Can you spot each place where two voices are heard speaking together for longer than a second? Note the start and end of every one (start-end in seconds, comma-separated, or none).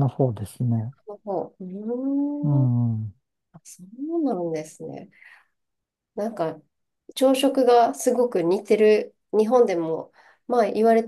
none